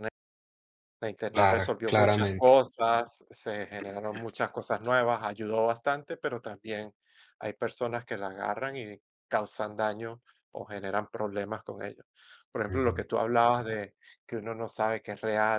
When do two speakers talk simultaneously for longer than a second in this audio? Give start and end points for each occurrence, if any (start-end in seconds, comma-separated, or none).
1.3-2.6